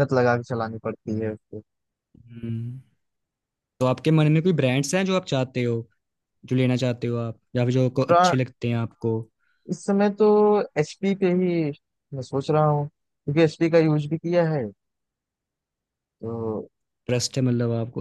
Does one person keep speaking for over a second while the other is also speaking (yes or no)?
no